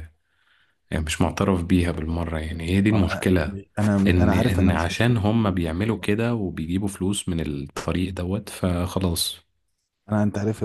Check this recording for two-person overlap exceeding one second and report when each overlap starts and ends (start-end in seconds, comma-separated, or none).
4.1-5.4